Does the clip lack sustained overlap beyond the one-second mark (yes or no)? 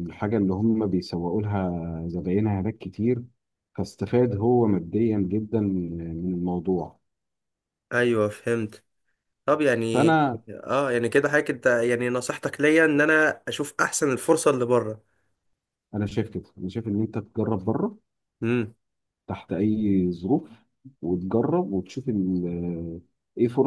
yes